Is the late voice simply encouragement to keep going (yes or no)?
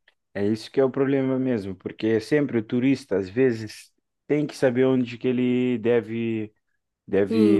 yes